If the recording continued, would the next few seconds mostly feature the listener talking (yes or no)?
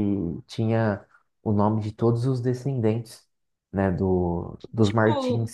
yes